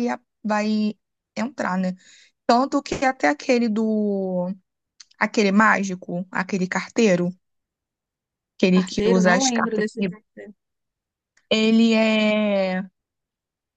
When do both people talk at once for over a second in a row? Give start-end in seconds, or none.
8.7-10.1